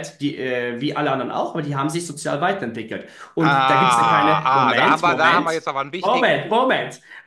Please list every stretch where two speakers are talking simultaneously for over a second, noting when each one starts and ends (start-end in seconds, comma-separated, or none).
3.4-6.8